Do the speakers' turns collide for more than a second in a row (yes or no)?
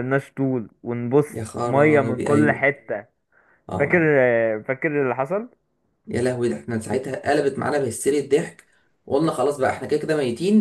yes